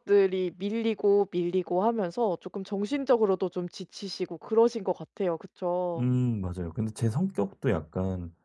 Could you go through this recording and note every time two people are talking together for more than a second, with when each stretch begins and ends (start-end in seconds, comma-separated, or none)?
none